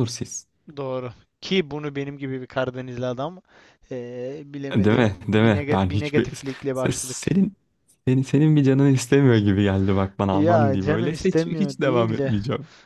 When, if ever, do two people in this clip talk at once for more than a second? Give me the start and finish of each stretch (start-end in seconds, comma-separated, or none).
4.7-7.2, 10.3-12.3